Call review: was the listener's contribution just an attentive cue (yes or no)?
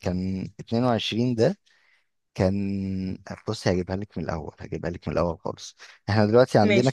yes